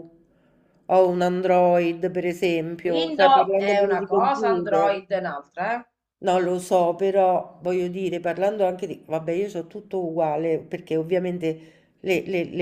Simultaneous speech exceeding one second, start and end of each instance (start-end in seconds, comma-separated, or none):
2.8-5.0